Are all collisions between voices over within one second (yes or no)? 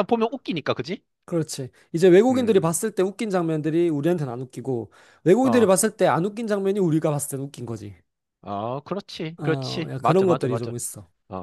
no